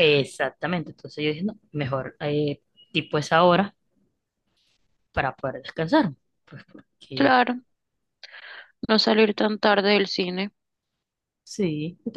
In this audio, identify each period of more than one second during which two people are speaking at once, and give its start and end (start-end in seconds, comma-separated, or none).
none